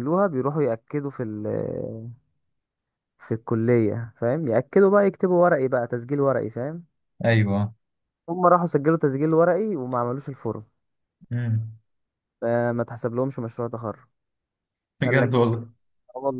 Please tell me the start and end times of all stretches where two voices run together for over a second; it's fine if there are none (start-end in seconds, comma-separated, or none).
none